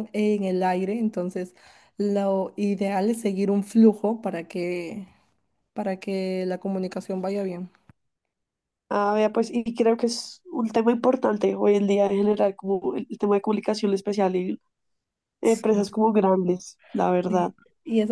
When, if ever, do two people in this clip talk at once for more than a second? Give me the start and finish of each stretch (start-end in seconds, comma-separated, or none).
none